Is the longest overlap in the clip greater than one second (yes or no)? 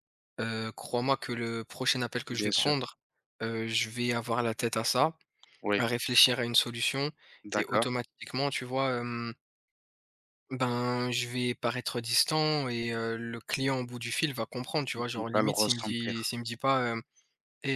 yes